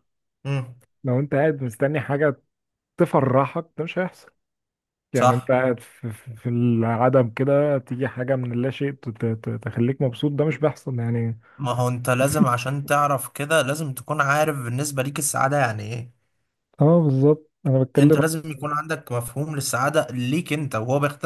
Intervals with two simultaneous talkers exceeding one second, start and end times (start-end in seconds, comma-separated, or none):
none